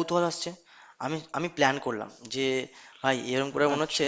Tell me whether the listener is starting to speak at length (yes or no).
no